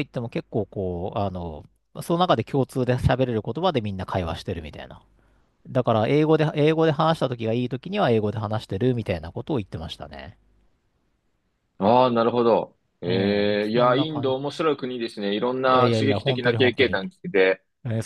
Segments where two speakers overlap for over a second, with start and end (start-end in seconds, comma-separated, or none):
13.1-14.4, 15.7-17.0